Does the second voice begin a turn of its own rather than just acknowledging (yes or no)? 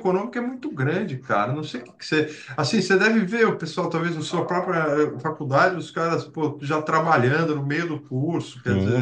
yes